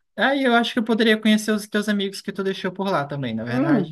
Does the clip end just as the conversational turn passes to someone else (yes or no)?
yes